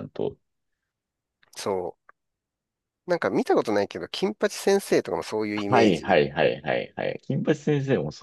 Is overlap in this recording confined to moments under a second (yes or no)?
yes